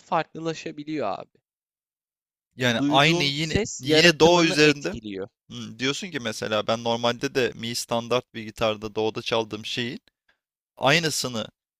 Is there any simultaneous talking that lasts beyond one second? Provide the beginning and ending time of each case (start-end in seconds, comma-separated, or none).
2.8-5.0